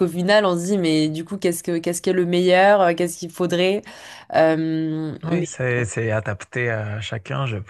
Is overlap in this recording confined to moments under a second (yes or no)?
yes